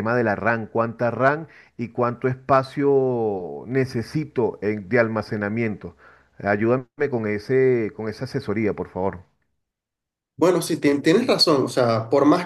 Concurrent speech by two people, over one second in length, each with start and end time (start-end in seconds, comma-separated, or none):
none